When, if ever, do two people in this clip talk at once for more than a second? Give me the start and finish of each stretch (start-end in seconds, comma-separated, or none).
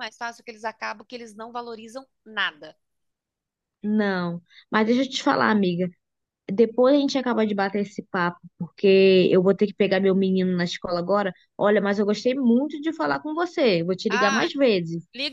none